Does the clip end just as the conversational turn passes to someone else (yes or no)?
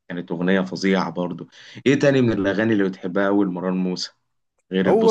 yes